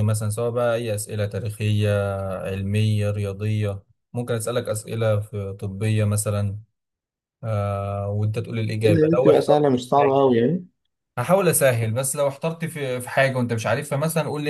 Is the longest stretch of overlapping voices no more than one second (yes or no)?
no